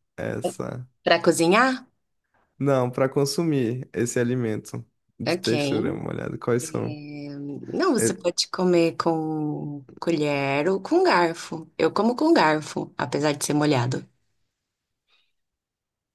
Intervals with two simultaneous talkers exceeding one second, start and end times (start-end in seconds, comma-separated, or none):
none